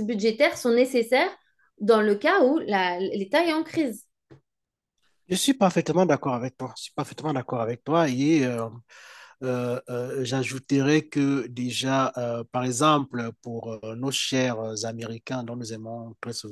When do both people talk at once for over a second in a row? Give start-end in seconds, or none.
none